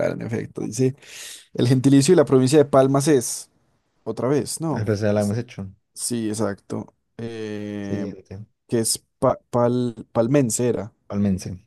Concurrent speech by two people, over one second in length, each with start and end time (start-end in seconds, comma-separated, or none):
none